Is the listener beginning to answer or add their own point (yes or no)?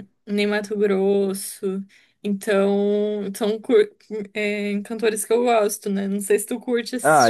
yes